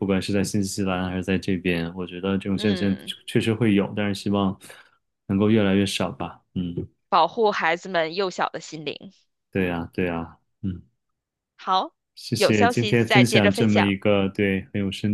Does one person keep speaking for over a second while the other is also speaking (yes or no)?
yes